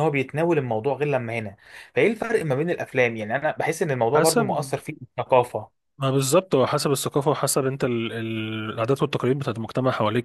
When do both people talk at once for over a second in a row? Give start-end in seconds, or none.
none